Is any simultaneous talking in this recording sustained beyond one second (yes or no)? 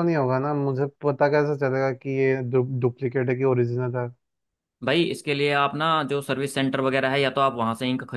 no